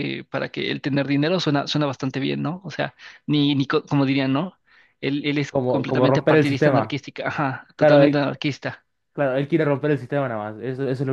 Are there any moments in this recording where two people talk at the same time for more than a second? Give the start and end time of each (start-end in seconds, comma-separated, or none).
5.5-7.0